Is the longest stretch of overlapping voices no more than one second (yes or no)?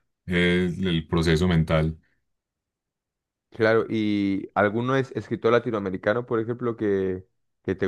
yes